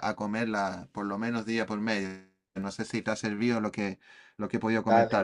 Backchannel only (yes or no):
no